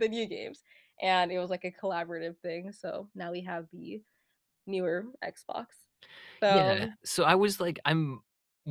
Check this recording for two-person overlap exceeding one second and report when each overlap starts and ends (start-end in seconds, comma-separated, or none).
none